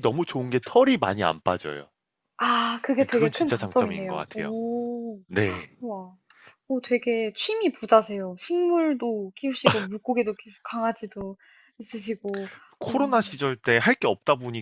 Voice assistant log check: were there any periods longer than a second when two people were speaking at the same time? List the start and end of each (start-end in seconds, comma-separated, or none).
3.1-4.5